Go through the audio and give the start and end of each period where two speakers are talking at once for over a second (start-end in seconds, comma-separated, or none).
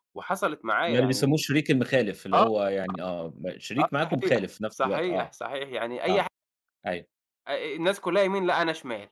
3.8-5.3